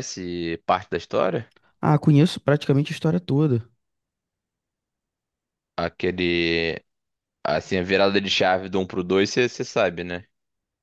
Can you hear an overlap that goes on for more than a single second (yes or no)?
no